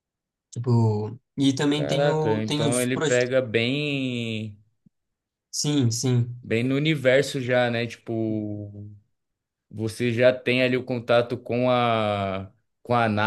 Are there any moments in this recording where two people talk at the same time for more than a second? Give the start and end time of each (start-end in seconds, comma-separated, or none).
1.7-3.3